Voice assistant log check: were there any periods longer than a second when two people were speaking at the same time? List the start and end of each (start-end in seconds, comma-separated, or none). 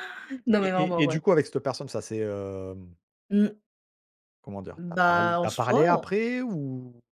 4.8-6.1